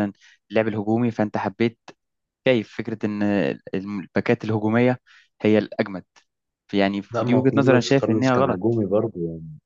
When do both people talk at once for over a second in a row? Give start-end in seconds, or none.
7.1-8.6